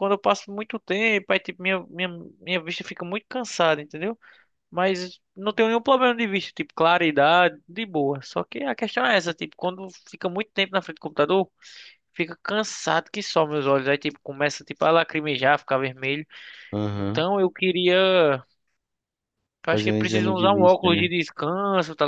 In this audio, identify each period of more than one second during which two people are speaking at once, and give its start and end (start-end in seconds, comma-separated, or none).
19.7-21.1